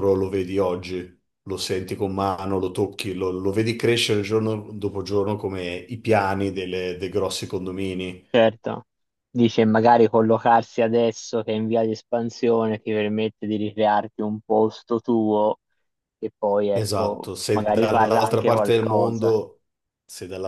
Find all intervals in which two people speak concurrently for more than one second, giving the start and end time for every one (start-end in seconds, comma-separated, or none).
16.8-19.4